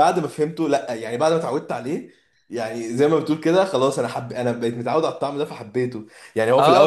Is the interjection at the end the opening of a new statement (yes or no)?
yes